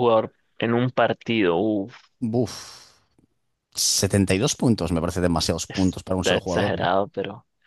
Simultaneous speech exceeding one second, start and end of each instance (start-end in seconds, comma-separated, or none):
5.7-6.9